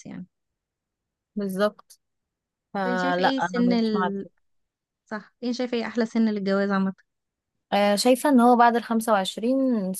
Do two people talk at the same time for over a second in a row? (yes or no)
yes